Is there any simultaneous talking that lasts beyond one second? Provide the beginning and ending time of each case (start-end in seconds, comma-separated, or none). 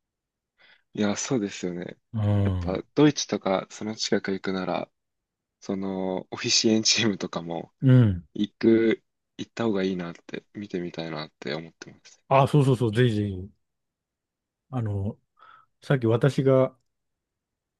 none